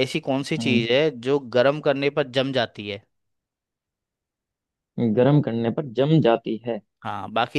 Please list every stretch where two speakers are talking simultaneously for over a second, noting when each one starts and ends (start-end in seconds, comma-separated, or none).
none